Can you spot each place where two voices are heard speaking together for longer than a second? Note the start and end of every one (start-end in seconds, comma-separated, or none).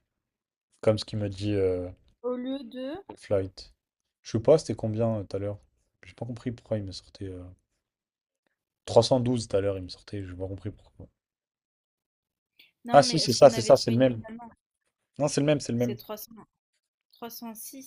12.9-14.2